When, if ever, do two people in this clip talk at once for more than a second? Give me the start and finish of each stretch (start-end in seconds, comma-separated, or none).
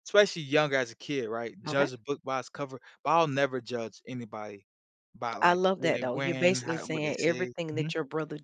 5.4-7.9